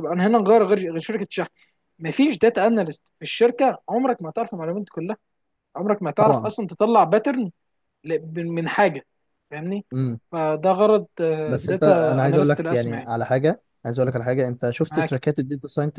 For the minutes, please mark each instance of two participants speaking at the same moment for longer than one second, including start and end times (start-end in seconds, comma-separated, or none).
11.7-13.1